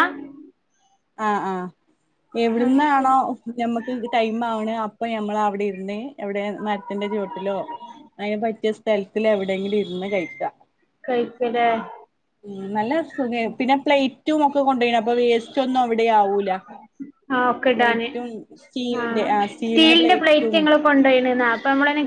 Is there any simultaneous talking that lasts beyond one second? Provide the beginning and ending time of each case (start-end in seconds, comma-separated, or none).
none